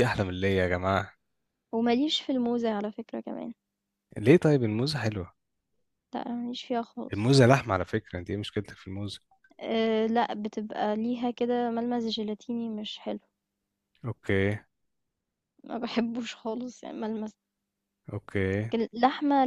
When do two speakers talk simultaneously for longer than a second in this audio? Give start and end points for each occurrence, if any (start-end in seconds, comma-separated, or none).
none